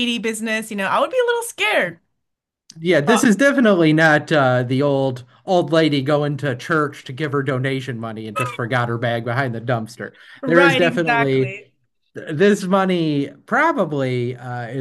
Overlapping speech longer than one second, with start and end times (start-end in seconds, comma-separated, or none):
10.4-11.6